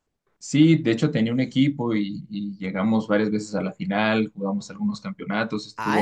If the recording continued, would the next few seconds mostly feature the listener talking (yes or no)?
yes